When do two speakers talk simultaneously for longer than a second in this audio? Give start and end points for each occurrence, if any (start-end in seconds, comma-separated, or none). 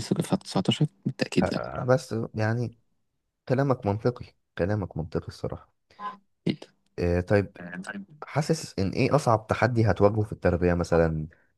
none